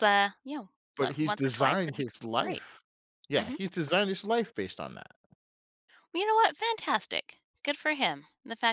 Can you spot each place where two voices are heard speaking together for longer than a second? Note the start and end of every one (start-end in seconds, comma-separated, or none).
1.0-2.6